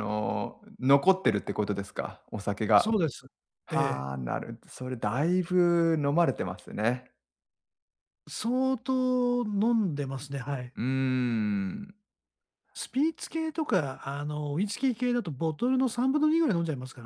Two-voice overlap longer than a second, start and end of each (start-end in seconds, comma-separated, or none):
none